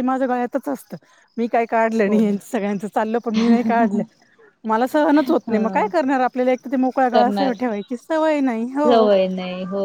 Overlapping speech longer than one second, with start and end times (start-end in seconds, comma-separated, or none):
none